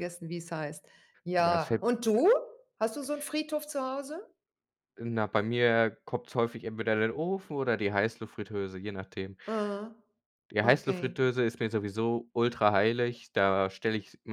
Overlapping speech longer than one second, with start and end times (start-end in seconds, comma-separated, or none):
none